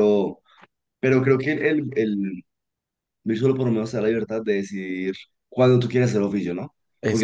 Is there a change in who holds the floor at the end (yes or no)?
no